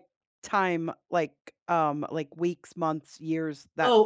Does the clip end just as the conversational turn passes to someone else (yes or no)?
yes